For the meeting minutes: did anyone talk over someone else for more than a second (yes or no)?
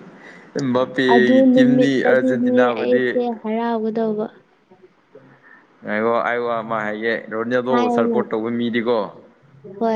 yes